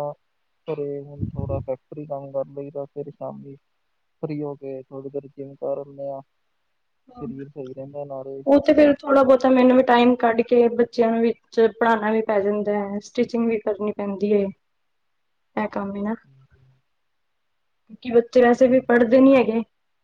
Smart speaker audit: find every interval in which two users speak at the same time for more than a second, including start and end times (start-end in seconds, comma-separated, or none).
none